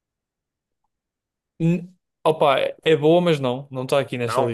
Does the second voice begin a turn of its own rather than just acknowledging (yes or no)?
no